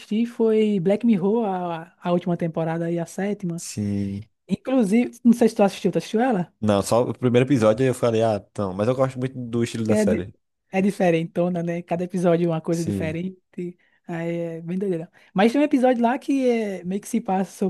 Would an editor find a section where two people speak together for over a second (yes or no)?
no